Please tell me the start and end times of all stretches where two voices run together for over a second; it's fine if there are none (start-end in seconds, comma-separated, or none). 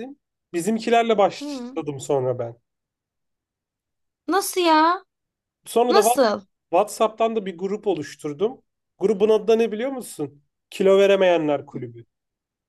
none